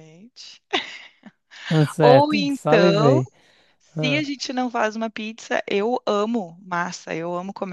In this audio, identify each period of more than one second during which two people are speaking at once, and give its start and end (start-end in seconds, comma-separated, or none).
2.0-3.2